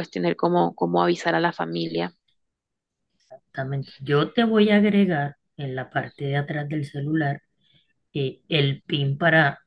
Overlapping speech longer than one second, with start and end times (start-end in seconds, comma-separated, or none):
none